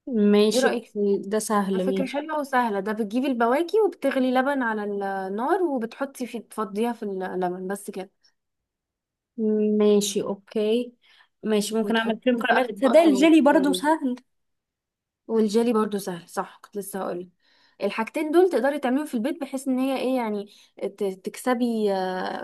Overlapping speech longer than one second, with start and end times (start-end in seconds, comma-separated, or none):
11.8-13.3